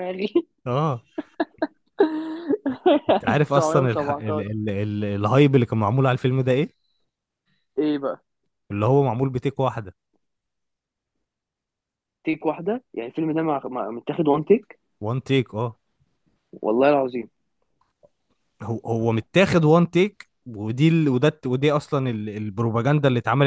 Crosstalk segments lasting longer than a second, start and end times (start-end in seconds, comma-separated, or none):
3.1-4.4